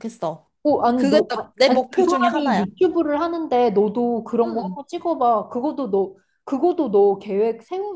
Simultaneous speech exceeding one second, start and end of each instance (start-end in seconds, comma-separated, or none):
0.9-2.6